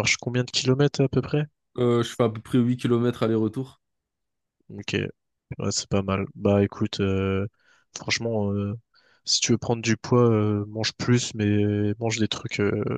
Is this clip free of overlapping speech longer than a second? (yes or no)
yes